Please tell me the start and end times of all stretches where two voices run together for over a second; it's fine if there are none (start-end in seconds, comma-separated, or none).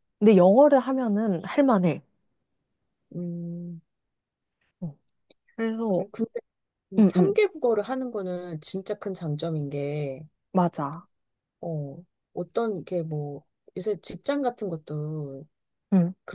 none